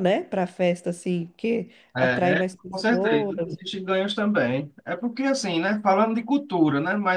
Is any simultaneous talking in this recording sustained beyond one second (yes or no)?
yes